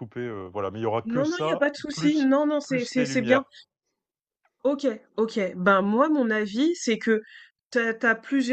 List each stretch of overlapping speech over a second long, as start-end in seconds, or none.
1.0-3.4